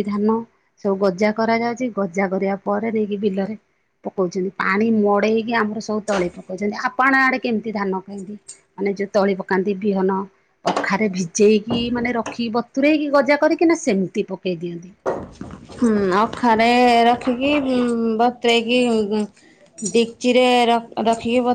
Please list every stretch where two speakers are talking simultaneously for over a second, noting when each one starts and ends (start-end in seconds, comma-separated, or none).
none